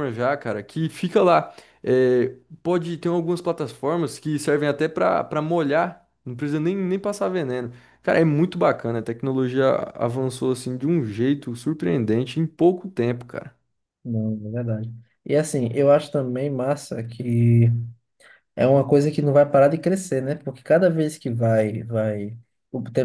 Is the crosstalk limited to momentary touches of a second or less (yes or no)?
yes